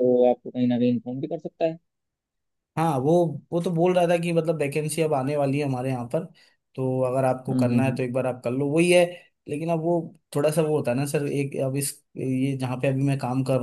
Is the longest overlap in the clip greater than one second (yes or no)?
no